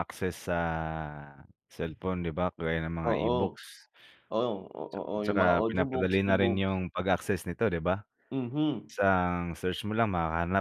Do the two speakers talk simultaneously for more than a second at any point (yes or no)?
yes